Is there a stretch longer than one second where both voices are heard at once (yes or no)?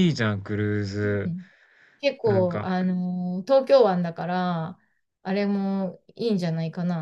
no